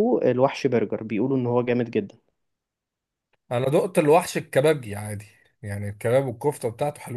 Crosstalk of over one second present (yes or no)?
no